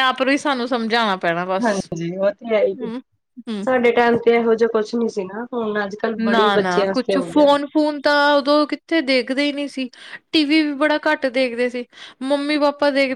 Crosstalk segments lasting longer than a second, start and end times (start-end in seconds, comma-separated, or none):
none